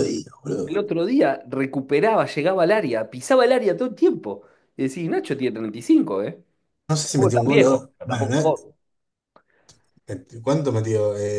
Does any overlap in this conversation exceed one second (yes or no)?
yes